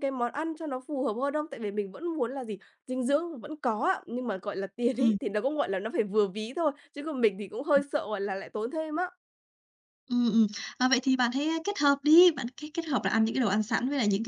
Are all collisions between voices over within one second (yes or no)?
yes